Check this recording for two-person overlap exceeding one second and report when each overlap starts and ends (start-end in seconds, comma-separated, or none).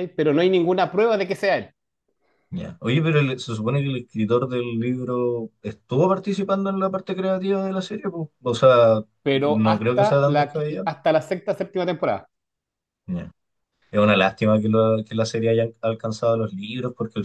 9.2-10.9